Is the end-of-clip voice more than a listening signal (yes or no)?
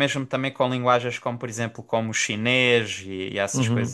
yes